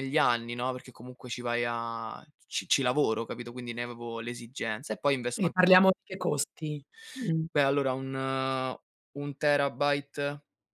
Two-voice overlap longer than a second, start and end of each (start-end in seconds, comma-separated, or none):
none